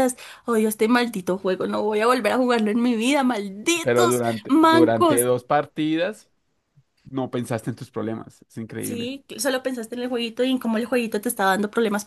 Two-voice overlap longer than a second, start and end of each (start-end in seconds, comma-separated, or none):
3.8-5.2